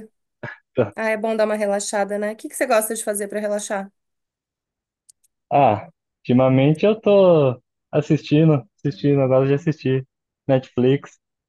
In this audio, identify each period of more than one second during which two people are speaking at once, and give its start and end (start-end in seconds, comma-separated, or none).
none